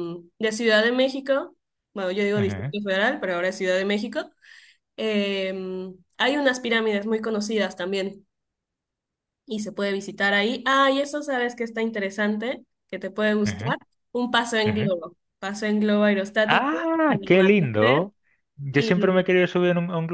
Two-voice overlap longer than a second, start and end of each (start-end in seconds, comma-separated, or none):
16.4-18.1